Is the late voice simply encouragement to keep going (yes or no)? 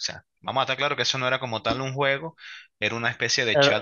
yes